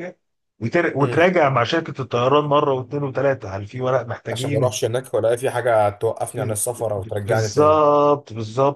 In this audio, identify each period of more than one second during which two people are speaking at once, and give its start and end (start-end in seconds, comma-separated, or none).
6.3-7.8